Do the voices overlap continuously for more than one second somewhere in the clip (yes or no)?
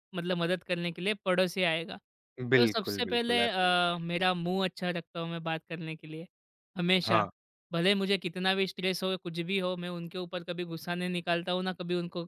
yes